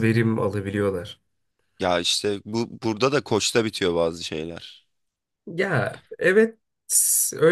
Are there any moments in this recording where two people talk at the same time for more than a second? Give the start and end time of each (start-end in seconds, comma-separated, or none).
none